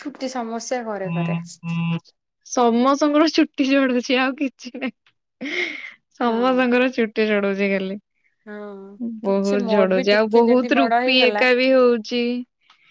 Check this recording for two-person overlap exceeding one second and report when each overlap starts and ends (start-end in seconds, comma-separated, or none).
9.3-11.4